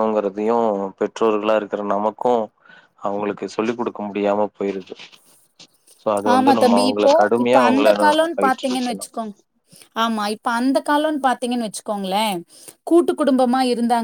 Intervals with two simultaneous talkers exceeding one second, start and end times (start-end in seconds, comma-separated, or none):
6.3-9.1